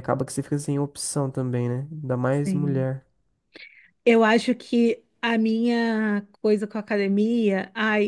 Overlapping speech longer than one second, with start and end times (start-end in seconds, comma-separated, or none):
none